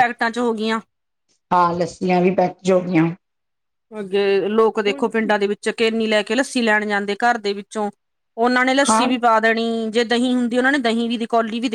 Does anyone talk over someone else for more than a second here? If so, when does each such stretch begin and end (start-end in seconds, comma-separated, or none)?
none